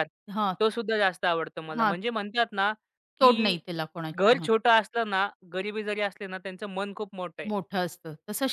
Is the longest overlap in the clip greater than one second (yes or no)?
no